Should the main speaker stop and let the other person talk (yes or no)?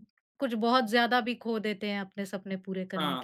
yes